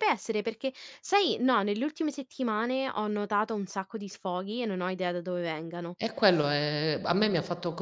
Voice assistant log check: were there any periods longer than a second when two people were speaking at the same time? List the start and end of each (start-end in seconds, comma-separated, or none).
none